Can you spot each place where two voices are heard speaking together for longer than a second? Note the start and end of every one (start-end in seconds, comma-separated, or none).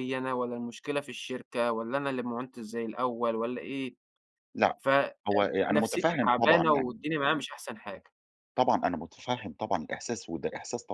5.7-7.0